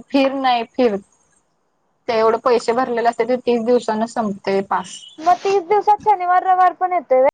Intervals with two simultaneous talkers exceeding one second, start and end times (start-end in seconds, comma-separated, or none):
none